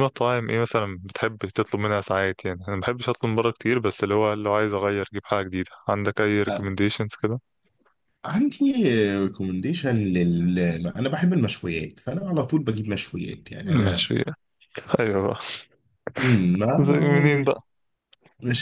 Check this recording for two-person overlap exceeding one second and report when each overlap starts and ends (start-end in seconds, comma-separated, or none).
none